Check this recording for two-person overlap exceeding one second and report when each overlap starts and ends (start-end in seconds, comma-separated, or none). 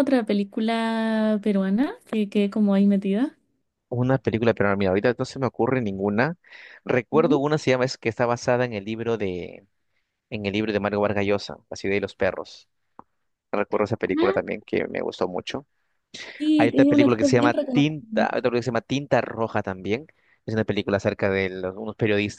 16.6-18.4